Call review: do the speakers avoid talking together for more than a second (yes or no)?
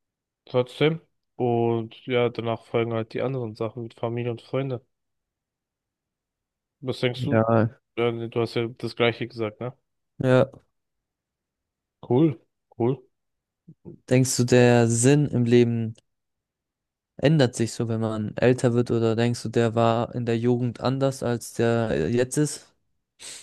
yes